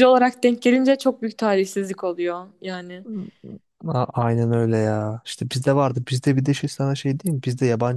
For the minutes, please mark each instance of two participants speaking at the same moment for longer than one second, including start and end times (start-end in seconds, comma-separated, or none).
none